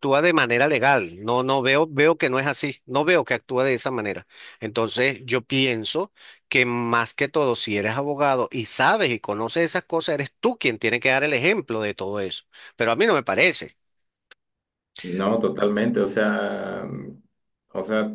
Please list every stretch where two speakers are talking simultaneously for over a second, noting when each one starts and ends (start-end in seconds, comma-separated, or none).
none